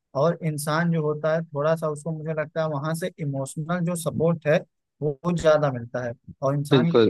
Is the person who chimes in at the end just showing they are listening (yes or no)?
yes